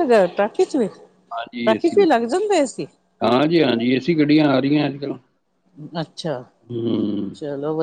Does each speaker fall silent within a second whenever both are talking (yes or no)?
no